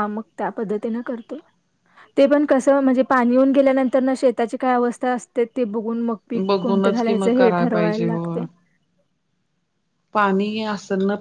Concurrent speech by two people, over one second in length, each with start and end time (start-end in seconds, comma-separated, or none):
6.5-8.3